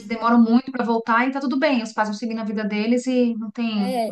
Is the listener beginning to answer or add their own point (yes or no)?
yes